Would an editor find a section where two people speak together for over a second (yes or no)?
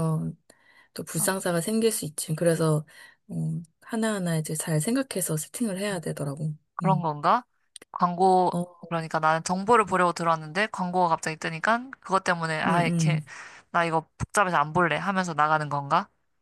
no